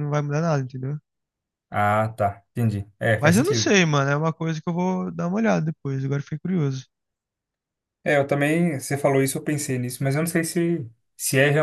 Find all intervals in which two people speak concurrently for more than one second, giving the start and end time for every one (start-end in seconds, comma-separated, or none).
none